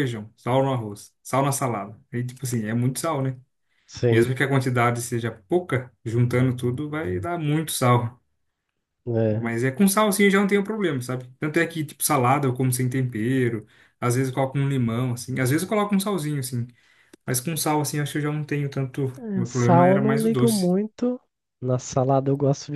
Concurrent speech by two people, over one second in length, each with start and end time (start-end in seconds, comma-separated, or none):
19.2-20.7